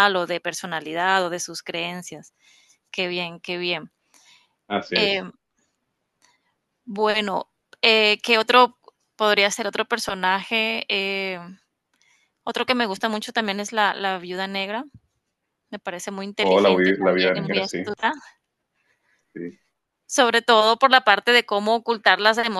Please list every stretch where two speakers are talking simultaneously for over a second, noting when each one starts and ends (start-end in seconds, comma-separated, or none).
16.5-17.8